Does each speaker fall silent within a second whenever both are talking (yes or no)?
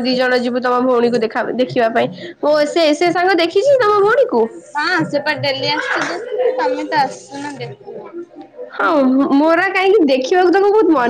yes